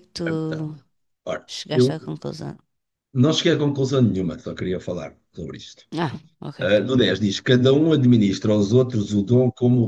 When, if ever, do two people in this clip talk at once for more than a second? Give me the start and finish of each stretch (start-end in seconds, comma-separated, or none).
none